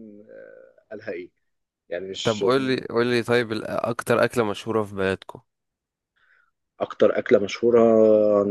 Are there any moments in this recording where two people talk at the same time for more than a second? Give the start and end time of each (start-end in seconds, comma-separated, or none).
none